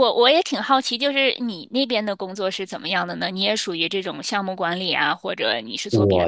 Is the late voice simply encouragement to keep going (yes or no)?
no